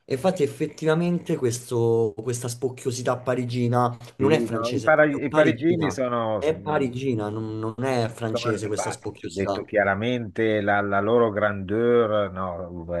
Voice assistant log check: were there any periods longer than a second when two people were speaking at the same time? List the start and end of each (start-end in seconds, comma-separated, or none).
4.2-6.9, 8.3-9.7